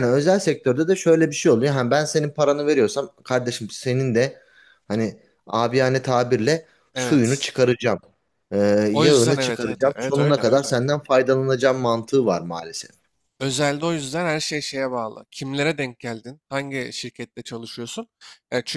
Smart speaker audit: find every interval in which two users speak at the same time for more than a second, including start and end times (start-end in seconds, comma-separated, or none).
8.9-10.8